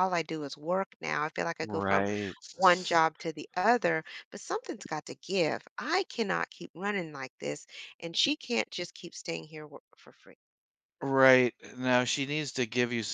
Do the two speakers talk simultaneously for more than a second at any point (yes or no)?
no